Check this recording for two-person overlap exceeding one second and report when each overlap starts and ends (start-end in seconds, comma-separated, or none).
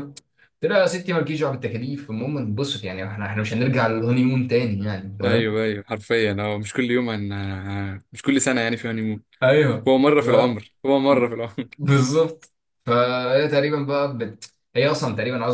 none